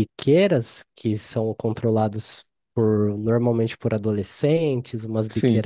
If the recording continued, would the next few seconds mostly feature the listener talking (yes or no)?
no